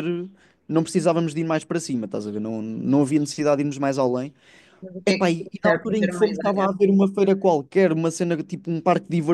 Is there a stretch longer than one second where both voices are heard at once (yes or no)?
yes